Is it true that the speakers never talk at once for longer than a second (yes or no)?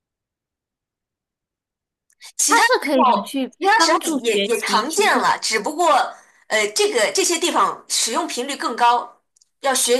no